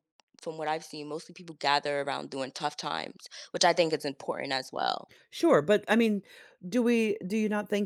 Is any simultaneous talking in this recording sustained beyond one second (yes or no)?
no